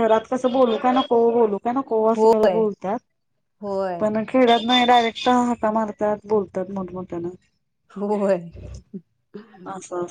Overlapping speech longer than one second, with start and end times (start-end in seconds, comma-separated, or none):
none